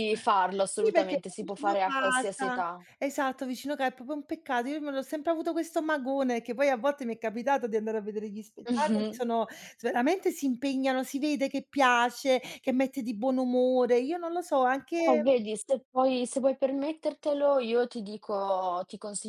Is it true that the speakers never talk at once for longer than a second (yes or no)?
no